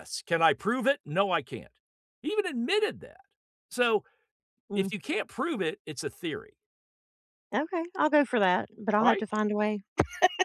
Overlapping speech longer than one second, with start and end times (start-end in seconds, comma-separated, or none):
none